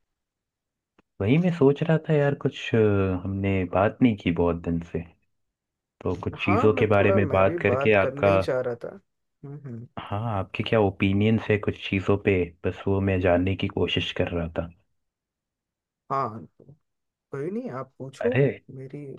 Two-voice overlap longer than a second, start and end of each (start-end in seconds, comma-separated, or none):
6.4-8.3